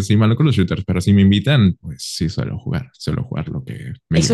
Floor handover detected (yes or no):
yes